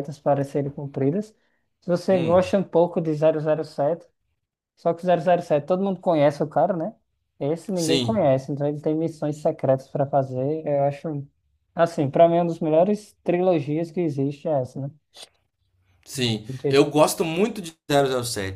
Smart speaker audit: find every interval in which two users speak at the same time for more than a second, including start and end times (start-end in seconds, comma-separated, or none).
none